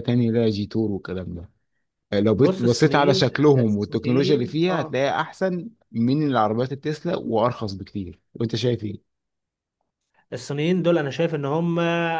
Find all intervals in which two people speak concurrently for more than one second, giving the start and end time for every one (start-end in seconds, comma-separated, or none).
2.4-5.0